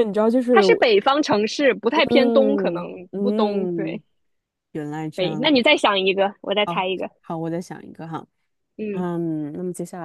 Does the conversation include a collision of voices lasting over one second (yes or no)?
yes